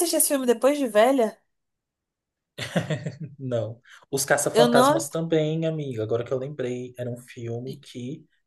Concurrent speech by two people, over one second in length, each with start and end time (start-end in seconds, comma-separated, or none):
none